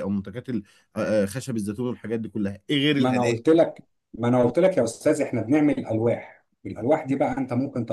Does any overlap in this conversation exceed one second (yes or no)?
no